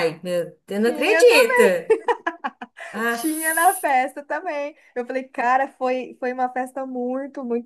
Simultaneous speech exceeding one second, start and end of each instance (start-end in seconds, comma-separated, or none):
none